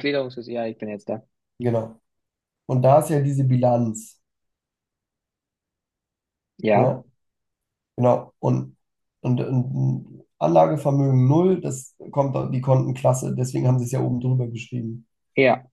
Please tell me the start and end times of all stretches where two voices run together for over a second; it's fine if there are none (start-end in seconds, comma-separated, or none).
none